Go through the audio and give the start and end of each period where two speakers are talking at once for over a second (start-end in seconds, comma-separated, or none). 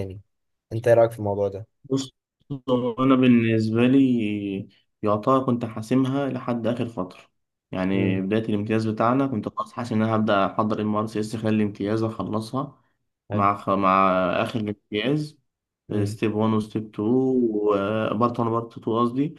none